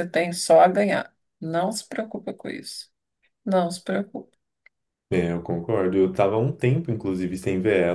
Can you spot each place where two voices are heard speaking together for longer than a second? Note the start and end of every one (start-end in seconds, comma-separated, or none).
none